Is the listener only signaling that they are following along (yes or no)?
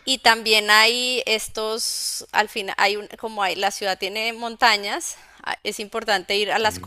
yes